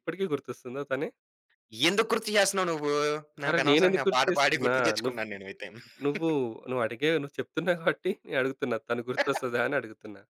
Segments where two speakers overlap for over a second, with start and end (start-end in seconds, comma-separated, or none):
3.5-5.2